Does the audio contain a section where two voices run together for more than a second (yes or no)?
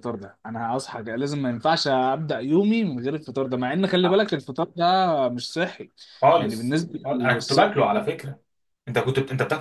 yes